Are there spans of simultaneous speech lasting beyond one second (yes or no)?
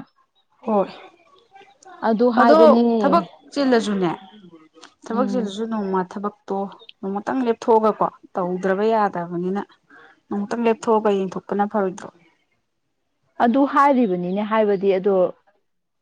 no